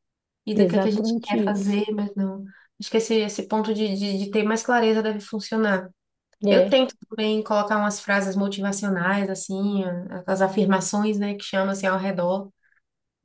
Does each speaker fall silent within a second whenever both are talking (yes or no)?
no